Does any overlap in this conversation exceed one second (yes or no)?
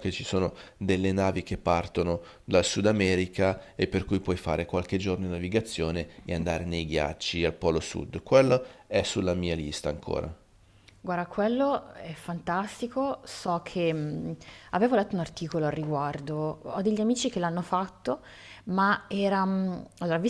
no